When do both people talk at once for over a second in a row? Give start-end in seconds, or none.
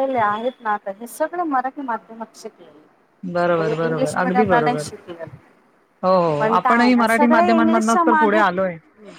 3.6-4.9, 6.4-8.4